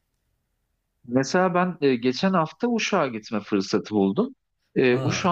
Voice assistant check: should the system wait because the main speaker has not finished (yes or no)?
yes